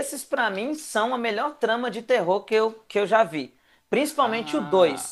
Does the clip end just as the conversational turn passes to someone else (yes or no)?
no